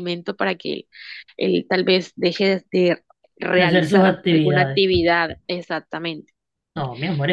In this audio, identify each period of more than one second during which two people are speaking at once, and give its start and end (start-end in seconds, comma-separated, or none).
3.6-4.8